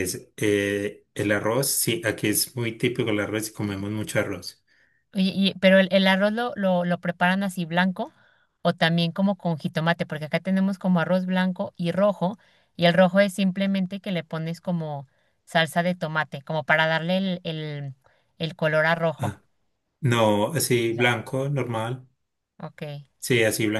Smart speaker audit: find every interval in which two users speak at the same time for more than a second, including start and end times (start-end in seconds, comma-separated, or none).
none